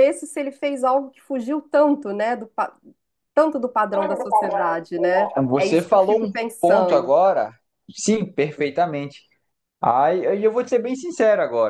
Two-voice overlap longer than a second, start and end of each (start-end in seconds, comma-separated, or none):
5.5-7.1